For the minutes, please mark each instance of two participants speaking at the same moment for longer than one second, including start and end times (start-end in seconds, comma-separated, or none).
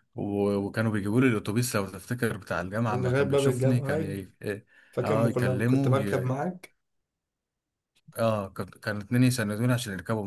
2.9-4.2, 5.0-6.4